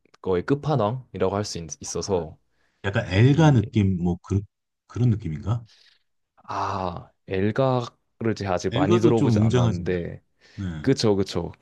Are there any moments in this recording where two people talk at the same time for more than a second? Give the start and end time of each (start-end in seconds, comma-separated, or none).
8.7-9.9